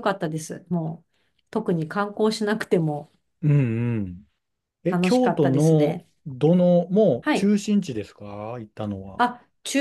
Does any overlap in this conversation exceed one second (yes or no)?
yes